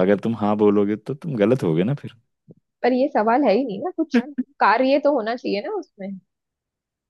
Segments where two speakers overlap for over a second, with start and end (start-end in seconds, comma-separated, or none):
none